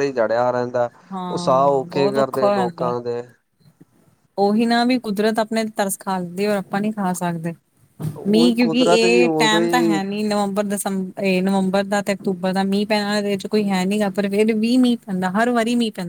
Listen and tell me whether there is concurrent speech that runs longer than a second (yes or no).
yes